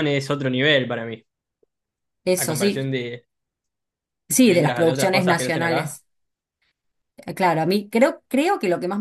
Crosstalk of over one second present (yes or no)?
yes